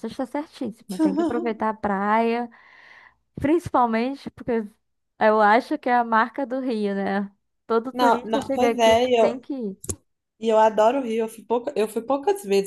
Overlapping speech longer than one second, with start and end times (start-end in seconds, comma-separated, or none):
7.9-9.4